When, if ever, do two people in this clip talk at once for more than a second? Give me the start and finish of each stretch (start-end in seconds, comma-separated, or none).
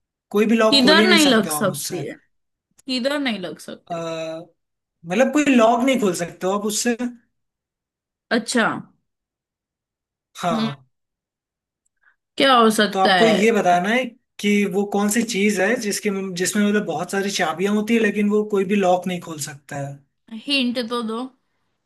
0.7-2.0